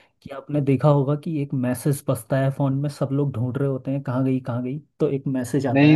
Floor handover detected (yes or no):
yes